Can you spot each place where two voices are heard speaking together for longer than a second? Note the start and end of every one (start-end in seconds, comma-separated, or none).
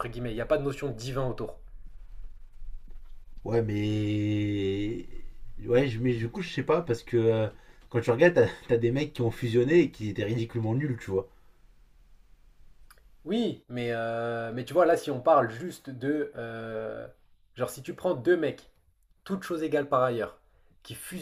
none